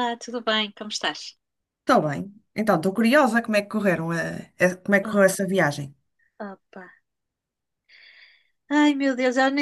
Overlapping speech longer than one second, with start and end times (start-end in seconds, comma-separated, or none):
none